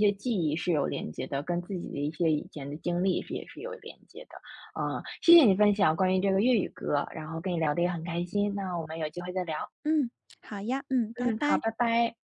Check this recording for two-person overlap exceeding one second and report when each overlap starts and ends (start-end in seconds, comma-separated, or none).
none